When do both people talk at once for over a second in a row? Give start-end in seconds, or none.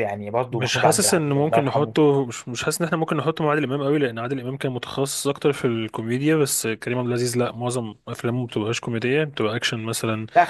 0.5-2.1